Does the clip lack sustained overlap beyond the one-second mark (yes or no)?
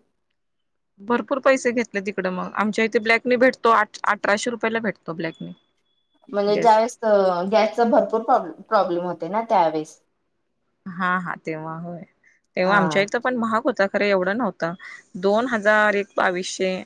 yes